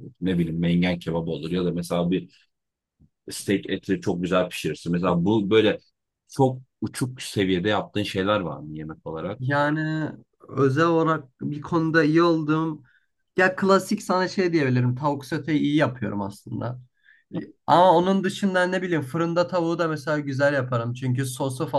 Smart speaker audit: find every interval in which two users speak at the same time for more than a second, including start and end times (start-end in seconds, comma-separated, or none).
none